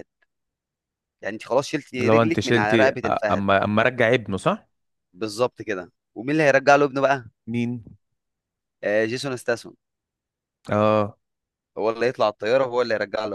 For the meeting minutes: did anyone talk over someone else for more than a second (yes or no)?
yes